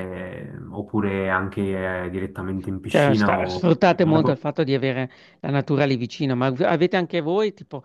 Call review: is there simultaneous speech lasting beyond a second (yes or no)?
yes